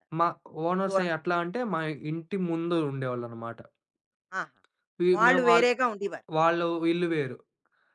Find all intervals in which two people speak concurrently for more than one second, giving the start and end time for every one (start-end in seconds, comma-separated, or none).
none